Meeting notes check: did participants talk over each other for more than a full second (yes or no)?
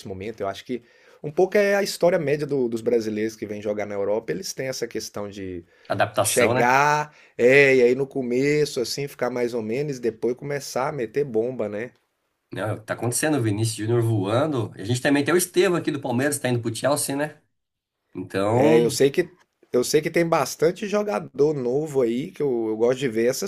no